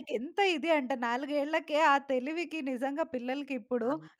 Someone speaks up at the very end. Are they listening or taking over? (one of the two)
listening